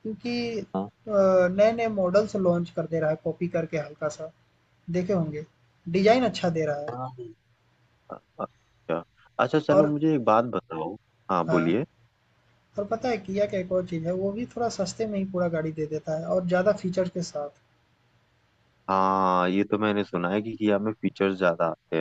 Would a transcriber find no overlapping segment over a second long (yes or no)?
yes